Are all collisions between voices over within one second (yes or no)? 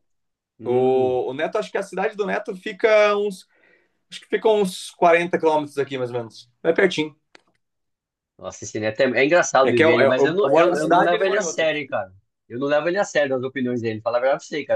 no